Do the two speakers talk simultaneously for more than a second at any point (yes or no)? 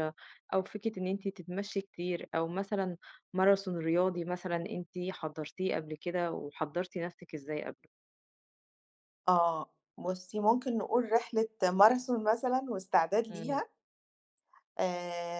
no